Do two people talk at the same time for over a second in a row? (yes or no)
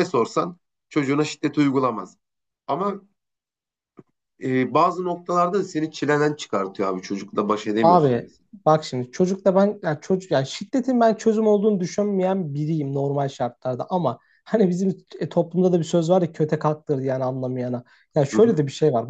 no